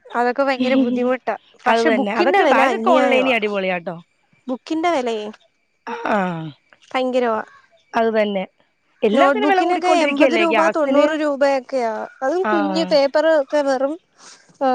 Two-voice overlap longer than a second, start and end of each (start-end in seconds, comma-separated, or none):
1.7-3.3, 9.2-11.1